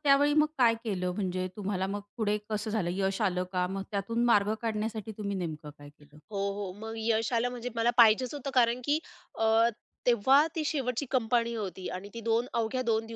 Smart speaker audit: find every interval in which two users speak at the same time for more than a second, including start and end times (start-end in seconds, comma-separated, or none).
none